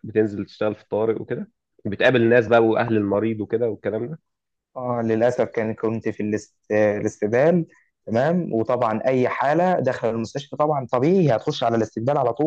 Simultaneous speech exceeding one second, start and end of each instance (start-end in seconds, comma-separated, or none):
none